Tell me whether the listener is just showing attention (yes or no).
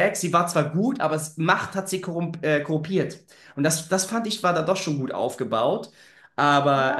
no